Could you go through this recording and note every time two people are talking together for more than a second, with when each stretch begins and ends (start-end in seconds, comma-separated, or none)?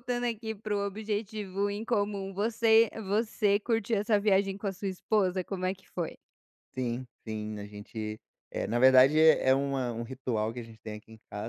none